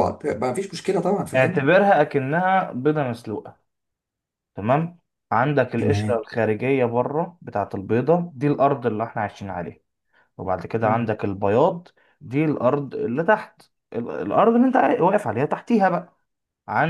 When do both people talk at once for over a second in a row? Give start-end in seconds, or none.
none